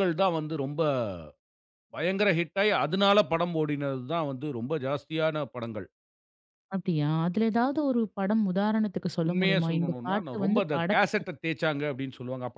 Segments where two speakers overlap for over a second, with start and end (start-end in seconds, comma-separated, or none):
9.3-11.3